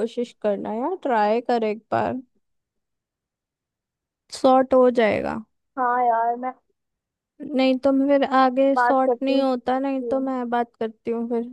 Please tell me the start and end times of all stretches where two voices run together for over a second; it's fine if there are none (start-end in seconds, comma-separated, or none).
8.7-10.1